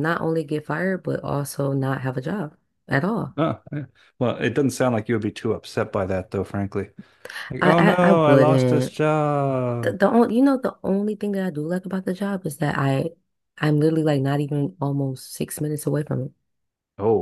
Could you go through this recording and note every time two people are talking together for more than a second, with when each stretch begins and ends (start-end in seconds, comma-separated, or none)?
7.6-9.0